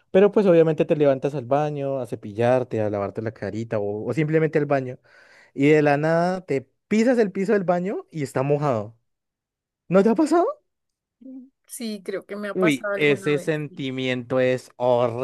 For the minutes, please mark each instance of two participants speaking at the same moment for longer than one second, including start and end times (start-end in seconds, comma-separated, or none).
12.5-13.8